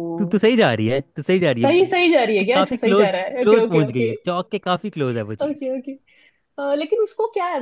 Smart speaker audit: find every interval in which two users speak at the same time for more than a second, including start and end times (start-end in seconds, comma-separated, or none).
2.4-4.1